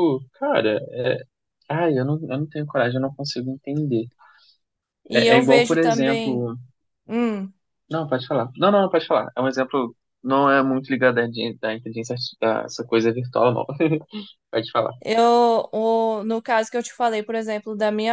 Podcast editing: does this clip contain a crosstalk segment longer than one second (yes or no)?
yes